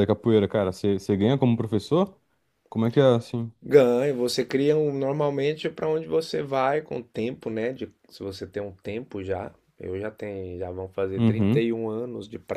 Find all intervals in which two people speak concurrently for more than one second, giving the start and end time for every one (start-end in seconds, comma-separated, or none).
none